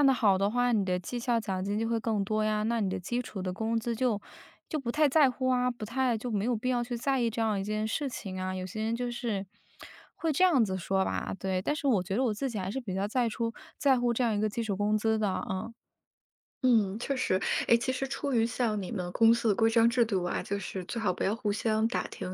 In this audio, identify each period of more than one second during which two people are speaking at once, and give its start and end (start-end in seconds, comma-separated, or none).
none